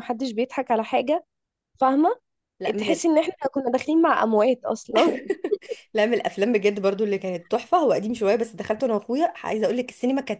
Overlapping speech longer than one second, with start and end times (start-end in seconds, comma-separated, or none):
none